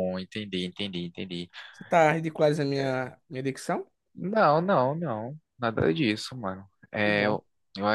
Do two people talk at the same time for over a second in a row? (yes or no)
no